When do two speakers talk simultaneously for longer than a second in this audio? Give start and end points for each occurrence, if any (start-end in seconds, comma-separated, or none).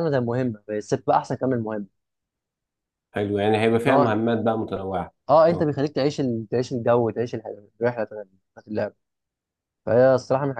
none